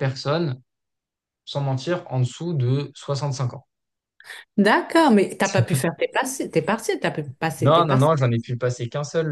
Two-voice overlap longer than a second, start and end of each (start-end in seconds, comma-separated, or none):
none